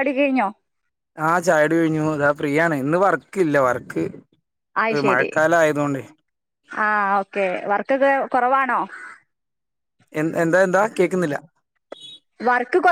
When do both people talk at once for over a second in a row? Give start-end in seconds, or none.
none